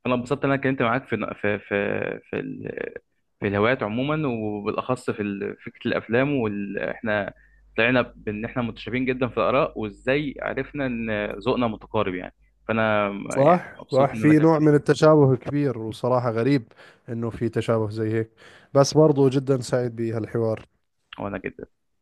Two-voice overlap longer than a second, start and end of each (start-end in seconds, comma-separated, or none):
13.3-14.8